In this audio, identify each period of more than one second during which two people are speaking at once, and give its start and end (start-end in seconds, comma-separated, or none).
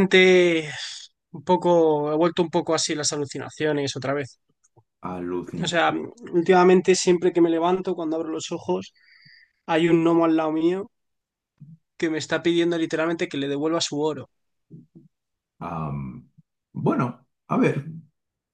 none